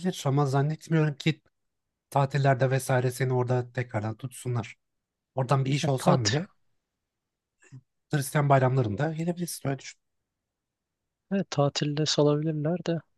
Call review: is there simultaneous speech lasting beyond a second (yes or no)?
no